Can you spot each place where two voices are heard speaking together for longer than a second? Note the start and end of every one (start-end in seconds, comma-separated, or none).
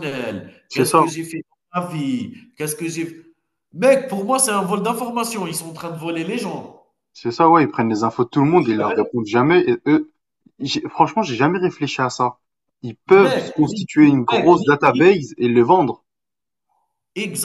13.2-15.1